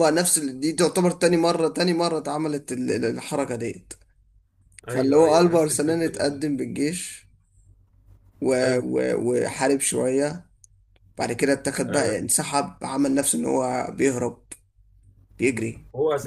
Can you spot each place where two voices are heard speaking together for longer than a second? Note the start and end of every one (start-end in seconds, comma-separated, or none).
4.9-6.4